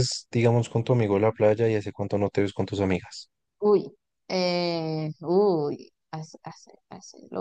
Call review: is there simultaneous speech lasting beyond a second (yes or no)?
no